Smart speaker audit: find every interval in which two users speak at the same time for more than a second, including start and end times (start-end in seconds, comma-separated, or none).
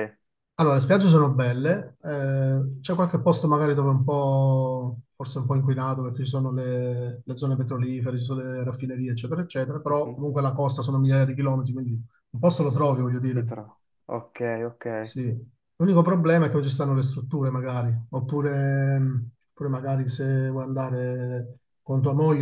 none